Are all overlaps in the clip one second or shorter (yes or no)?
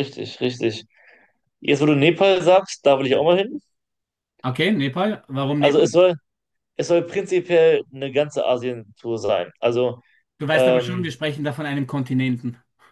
yes